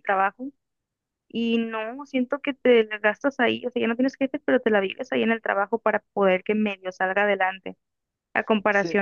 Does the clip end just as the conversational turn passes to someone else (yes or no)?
no